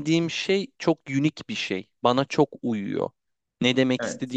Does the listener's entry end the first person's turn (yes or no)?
no